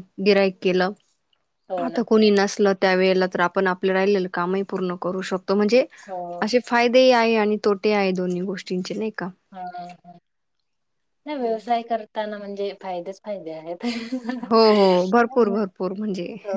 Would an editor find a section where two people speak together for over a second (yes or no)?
no